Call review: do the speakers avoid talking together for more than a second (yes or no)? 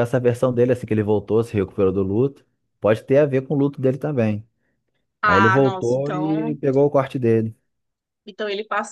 no